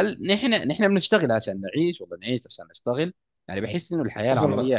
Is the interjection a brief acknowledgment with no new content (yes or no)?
yes